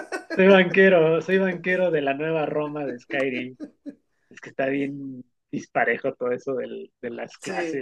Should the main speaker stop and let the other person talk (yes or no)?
yes